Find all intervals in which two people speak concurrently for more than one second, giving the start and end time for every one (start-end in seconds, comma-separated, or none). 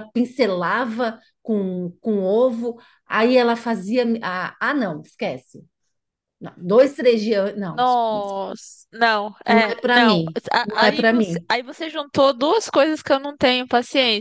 9.5-11.5